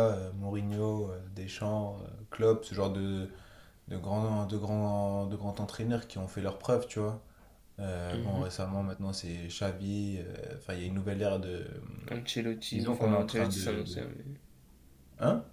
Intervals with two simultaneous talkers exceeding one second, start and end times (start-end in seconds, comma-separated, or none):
12.7-14.1